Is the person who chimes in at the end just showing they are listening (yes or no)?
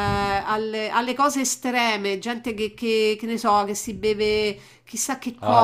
no